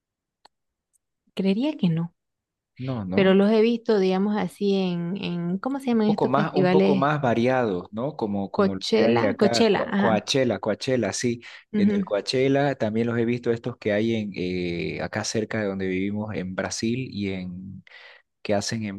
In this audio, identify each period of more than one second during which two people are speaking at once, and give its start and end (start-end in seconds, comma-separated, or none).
5.9-7.1, 8.6-10.3